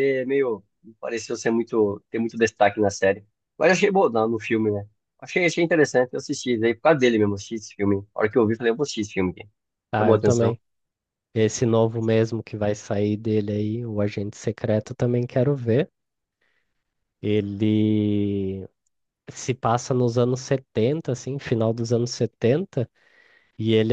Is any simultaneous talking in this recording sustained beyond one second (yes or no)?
no